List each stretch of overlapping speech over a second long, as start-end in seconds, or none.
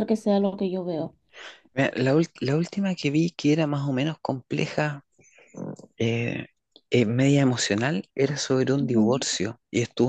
none